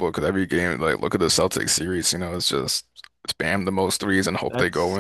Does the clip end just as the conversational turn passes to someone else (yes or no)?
yes